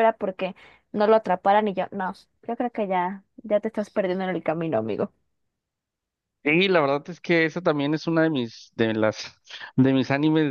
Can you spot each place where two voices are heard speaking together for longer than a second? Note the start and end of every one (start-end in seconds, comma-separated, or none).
none